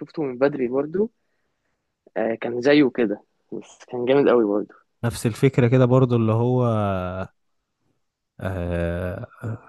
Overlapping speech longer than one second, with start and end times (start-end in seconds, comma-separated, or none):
none